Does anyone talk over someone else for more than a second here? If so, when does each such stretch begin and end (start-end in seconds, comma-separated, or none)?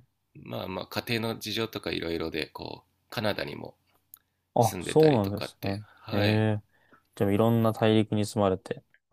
4.6-6.2